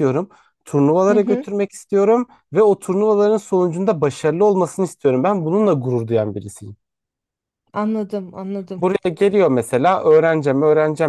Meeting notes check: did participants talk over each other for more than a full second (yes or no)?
no